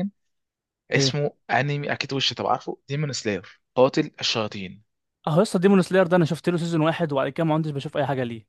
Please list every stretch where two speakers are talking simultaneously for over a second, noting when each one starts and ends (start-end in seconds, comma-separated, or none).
none